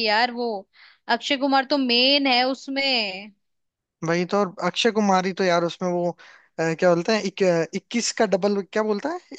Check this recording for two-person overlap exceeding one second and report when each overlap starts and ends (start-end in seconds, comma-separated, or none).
none